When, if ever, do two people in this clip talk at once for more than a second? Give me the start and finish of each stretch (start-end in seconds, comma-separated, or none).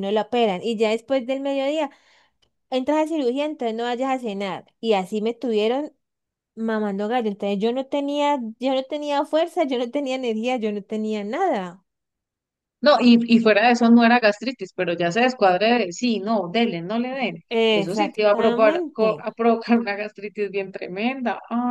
17.8-19.2